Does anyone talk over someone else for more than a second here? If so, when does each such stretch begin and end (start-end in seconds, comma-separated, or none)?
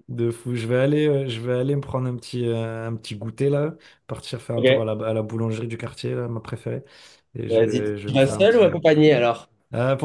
7.5-8.8